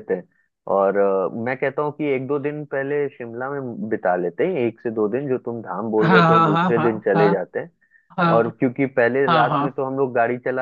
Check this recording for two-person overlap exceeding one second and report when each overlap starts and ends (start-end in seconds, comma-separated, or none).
6.0-7.2